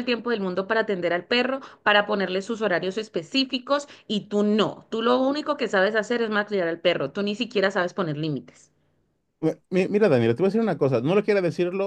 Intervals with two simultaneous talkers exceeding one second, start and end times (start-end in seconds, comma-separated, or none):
none